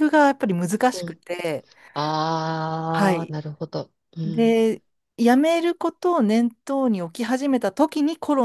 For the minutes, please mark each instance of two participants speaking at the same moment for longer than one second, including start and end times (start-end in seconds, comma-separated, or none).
none